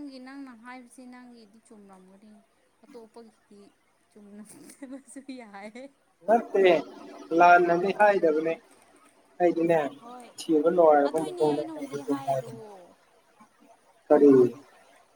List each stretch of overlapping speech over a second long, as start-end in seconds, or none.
11.0-12.5